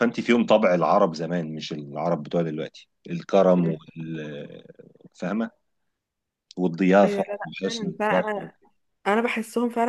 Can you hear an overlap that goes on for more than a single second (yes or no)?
yes